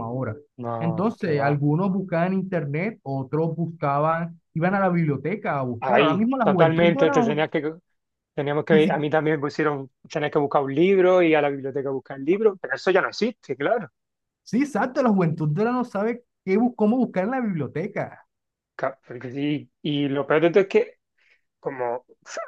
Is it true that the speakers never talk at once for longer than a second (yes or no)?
no